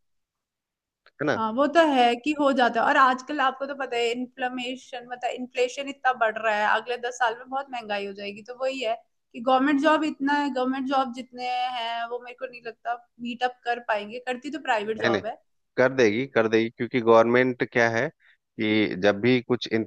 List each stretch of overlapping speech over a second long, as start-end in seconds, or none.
none